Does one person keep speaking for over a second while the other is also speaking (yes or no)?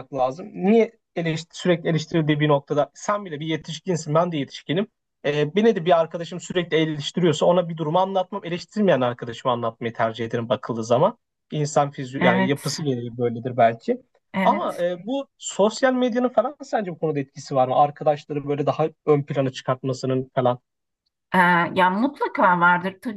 no